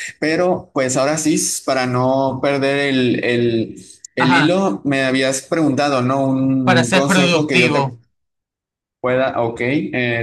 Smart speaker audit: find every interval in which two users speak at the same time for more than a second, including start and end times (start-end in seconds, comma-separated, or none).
6.6-8.0